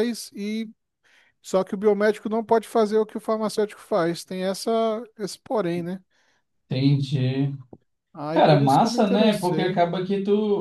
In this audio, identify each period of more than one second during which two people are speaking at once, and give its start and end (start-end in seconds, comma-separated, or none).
8.3-9.8